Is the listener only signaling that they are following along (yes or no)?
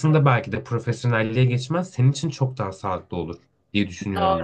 no